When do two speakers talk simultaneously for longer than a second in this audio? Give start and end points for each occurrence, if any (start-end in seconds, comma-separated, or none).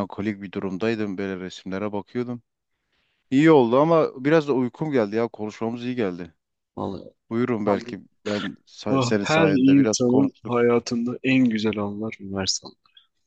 8.9-10.6